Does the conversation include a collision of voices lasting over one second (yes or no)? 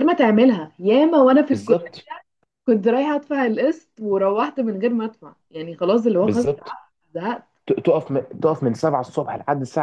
no